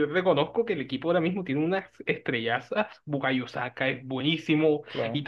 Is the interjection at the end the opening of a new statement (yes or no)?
no